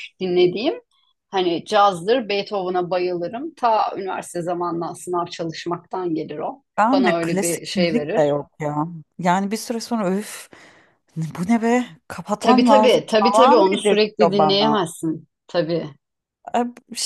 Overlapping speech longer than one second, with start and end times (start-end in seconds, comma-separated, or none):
6.8-8.4, 12.4-14.8